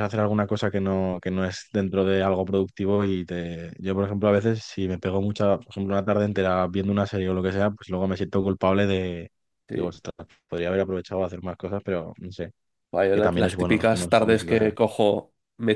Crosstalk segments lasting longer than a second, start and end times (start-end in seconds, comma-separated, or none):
13.1-14.7